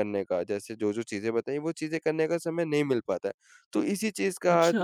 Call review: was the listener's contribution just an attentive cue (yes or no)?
yes